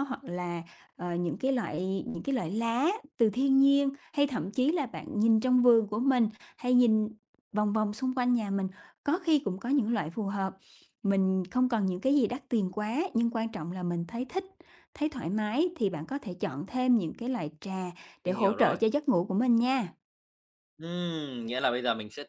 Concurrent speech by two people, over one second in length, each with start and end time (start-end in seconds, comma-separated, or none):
none